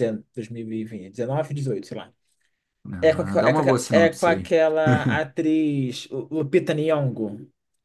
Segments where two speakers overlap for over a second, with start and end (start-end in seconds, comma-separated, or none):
3.0-4.6